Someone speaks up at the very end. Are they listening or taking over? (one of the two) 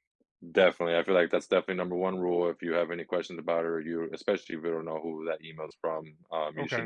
listening